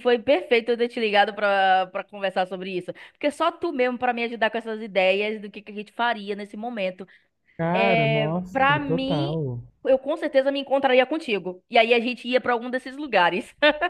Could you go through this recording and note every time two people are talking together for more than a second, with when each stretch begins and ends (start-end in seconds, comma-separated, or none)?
7.7-9.4